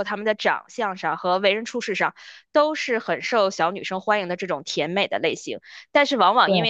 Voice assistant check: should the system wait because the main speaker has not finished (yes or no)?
yes